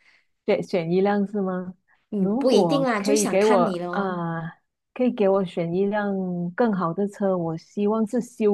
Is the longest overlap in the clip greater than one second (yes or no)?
yes